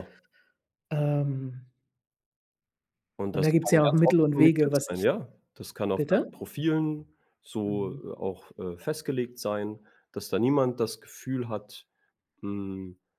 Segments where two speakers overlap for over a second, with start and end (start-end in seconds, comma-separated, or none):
3.3-5.1